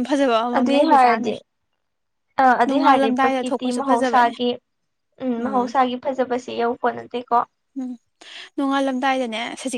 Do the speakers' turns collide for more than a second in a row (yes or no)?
yes